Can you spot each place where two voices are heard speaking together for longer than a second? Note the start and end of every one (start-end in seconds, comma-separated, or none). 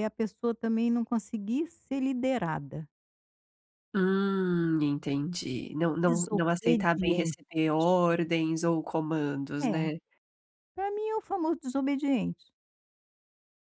6.0-7.4